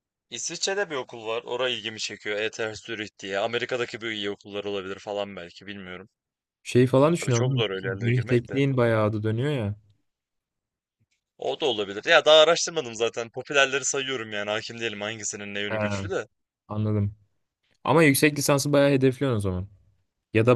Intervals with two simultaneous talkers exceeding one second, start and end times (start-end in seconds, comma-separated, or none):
7.1-8.6